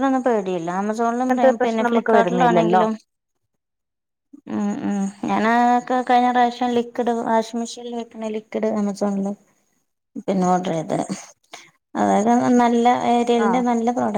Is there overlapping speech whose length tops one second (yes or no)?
yes